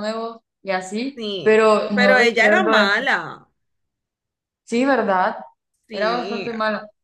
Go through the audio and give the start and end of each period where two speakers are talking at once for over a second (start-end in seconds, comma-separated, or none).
1.1-2.9